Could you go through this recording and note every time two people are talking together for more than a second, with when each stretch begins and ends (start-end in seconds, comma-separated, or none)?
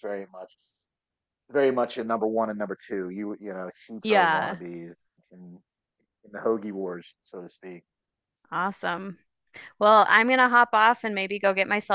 none